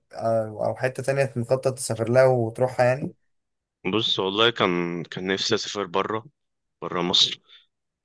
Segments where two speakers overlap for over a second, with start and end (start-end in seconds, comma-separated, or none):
none